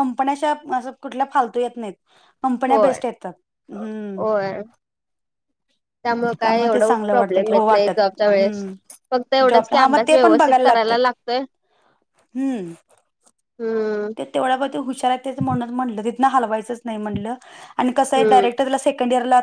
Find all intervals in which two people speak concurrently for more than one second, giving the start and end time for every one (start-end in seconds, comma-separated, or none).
6.7-8.7, 9.5-11.0